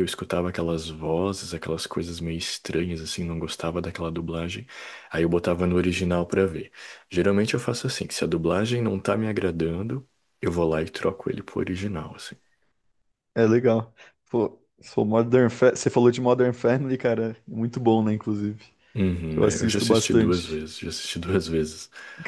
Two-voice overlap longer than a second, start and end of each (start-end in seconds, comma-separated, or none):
19.4-20.6